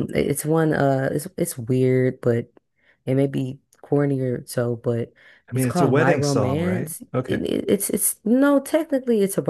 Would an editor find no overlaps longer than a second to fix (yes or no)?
no